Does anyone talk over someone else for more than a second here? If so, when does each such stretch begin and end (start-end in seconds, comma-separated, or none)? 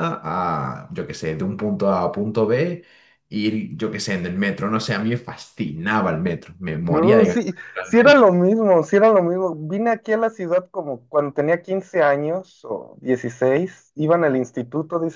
6.9-8.3